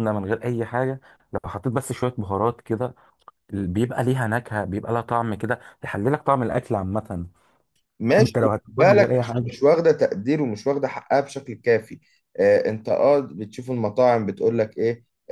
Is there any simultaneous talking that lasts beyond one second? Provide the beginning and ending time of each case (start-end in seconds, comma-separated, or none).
8.2-9.6